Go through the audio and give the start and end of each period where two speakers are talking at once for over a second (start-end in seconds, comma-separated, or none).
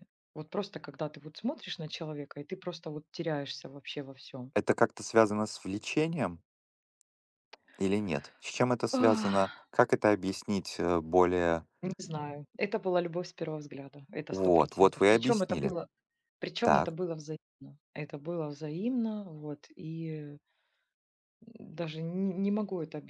14.3-15.7